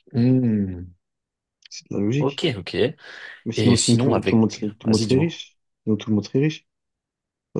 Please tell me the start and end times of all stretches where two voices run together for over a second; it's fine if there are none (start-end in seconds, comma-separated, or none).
3.5-5.4